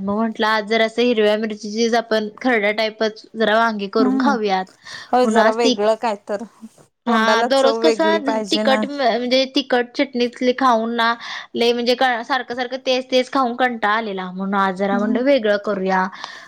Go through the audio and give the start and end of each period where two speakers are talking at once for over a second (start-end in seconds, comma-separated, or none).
7.1-8.8